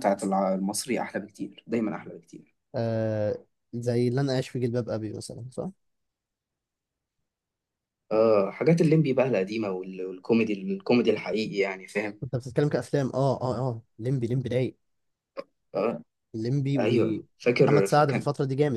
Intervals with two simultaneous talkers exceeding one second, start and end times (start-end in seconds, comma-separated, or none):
16.8-18.2